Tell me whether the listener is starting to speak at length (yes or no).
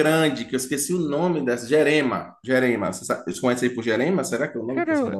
yes